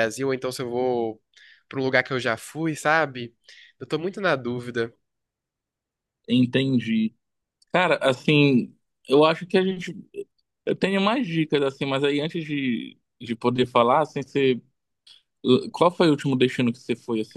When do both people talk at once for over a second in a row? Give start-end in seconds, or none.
none